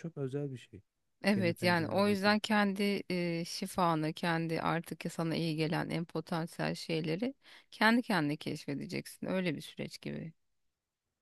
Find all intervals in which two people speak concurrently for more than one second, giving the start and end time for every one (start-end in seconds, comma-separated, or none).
1.3-2.6